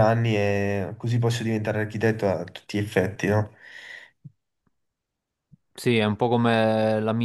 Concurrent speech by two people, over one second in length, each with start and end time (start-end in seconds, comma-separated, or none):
none